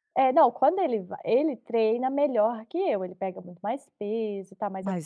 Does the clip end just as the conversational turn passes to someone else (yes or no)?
no